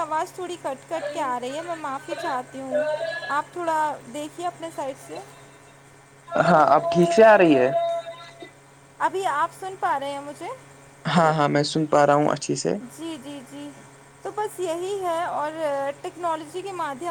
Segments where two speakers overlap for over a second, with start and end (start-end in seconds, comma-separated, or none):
none